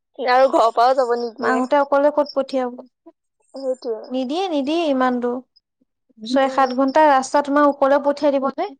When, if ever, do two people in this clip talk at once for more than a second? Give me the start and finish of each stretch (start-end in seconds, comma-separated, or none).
none